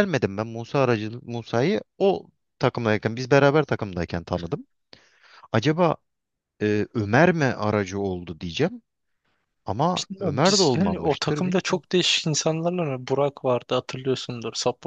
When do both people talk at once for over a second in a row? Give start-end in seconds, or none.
10.0-11.8